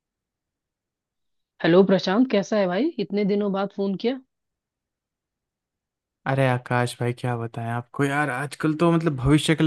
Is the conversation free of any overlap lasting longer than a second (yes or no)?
yes